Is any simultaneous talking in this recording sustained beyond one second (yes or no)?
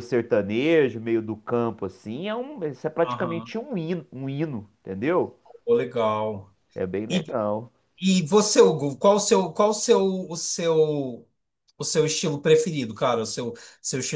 no